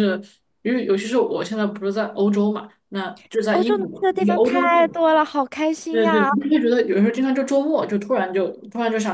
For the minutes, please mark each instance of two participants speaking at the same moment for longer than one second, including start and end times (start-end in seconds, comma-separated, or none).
3.5-4.8